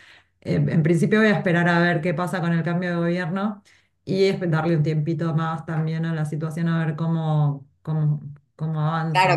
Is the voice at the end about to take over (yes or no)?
yes